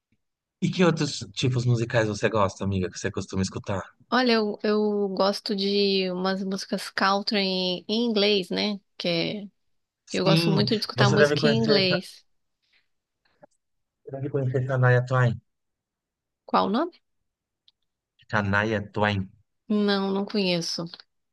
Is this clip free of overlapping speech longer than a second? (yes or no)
no